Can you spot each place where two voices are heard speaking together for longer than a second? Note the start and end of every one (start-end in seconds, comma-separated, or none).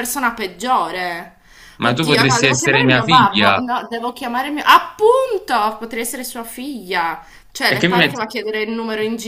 1.8-3.6